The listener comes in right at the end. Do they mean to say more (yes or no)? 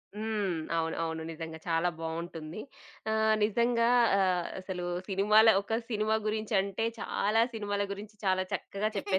no